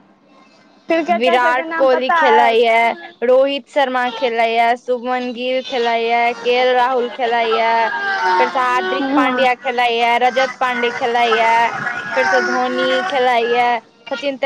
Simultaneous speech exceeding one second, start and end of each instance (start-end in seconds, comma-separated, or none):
1.2-2.8